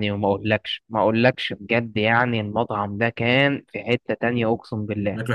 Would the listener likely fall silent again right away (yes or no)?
yes